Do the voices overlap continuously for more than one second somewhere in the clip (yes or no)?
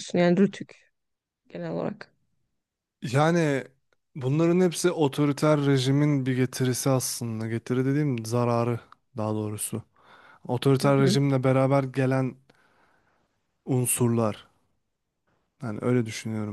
no